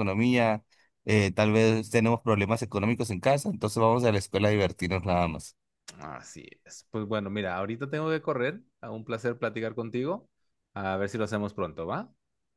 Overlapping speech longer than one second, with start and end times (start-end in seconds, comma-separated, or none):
none